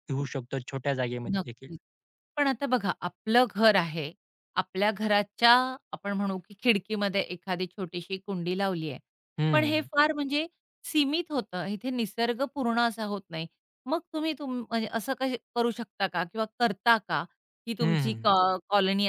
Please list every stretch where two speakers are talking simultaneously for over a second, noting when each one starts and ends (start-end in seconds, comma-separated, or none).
none